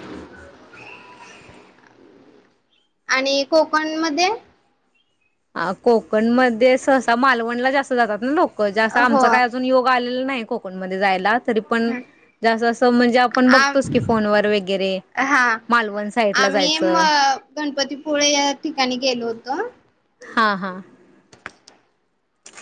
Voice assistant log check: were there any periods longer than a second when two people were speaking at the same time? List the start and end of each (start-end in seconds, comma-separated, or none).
none